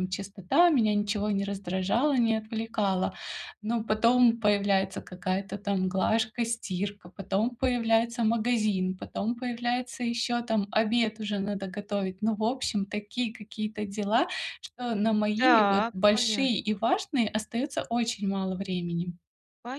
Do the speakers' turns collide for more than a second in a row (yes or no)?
yes